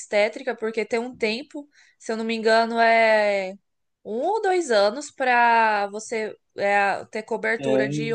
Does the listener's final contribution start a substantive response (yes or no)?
no